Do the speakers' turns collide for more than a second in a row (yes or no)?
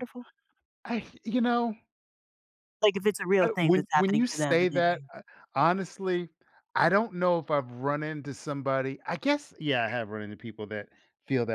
yes